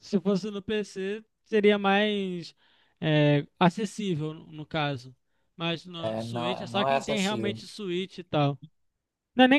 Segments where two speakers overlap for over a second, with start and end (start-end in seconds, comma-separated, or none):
6.0-7.6